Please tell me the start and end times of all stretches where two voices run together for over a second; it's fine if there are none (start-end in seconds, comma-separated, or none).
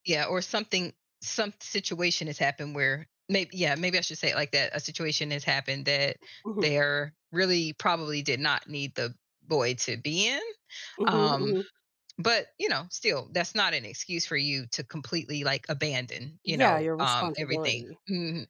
16.4-18.0